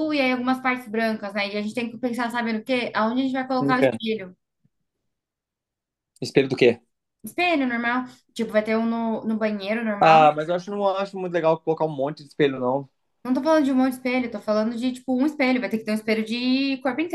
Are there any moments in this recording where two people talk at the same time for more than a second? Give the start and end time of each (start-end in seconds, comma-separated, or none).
none